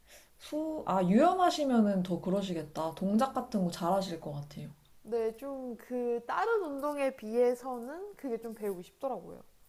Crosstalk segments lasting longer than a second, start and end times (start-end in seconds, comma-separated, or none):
none